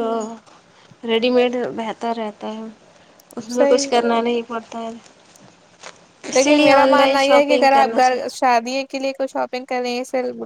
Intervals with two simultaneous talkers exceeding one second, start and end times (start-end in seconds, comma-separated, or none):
none